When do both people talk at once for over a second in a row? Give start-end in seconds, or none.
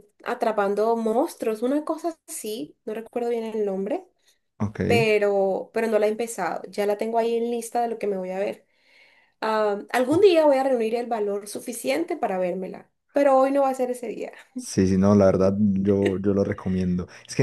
none